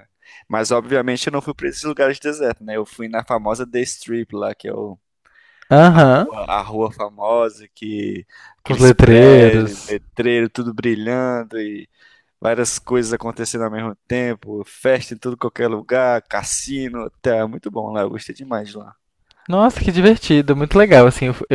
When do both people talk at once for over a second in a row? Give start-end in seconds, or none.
8.6-10.0